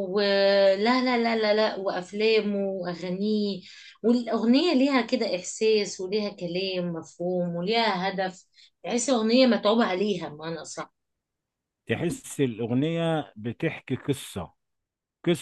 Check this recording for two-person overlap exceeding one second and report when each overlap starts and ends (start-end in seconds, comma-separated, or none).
none